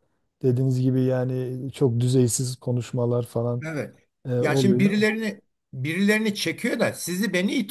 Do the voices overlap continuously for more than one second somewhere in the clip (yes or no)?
no